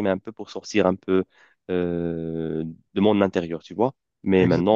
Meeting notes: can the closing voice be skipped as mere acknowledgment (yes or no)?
yes